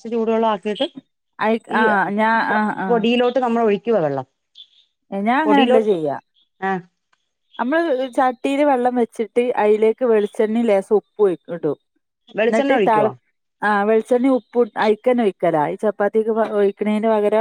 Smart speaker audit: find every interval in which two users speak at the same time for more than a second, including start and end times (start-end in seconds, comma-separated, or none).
none